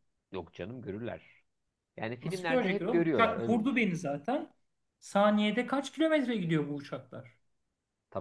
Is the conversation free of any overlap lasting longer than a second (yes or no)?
no